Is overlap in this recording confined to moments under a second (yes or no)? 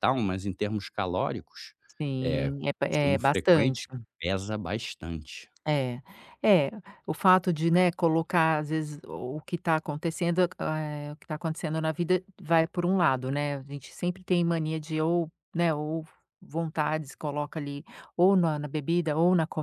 no